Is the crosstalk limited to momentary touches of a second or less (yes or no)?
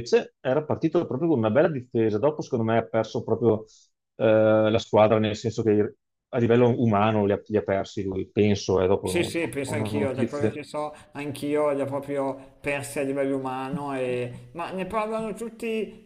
no